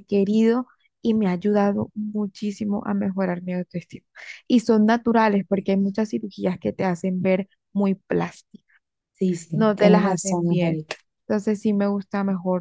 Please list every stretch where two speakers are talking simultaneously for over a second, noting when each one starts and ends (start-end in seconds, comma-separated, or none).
9.5-10.8